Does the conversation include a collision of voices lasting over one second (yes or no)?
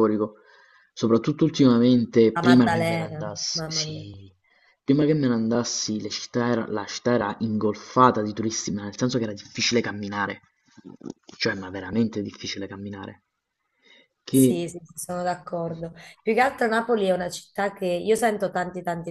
yes